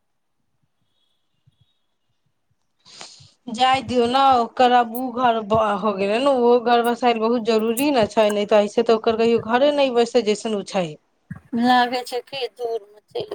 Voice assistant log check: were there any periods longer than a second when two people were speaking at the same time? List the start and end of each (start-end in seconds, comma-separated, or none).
none